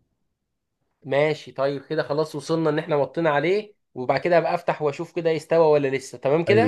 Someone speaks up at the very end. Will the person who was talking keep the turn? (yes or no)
no